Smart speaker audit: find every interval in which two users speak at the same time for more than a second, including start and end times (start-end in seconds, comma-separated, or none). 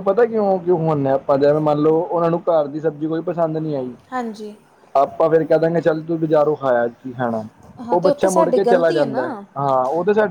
7.9-9.4